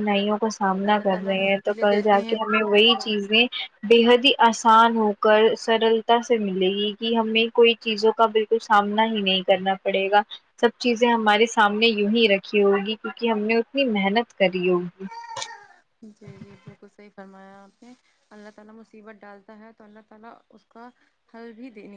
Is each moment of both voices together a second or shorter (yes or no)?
no